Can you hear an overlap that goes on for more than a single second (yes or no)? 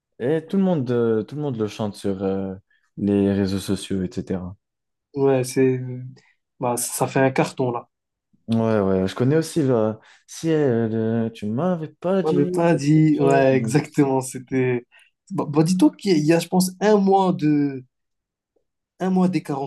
yes